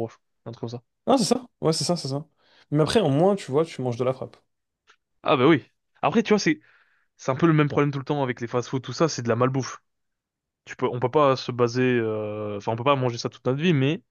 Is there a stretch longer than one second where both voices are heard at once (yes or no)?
no